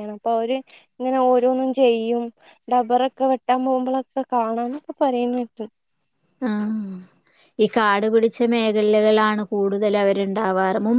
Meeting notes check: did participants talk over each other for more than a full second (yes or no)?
no